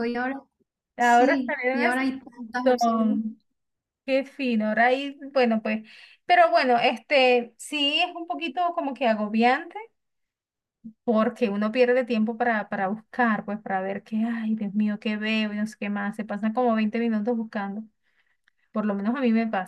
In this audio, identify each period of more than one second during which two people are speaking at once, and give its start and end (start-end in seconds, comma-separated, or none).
1.0-3.2